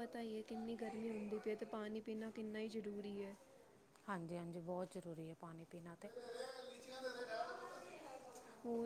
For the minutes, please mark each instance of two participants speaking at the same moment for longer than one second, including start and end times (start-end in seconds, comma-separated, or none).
none